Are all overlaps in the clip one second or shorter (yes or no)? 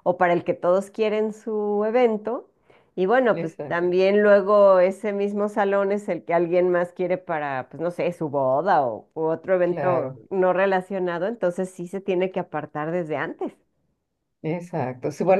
yes